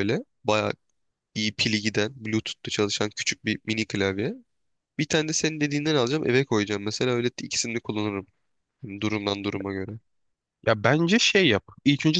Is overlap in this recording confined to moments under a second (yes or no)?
yes